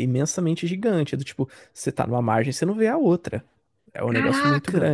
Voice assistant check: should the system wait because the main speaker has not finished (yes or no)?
yes